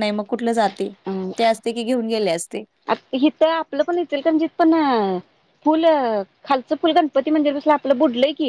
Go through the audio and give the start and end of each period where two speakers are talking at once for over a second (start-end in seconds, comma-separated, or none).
none